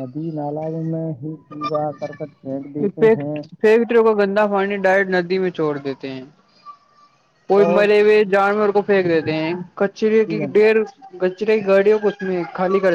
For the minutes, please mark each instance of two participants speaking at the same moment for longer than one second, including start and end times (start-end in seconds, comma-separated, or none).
none